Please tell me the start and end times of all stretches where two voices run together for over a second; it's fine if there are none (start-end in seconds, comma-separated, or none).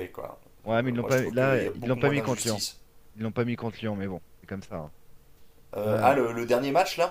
0.8-2.6